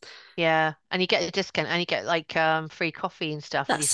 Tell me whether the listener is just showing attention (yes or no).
no